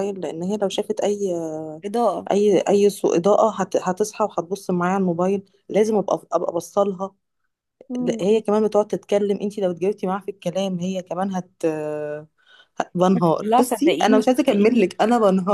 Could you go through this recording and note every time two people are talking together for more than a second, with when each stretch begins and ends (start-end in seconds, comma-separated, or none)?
13.1-14.9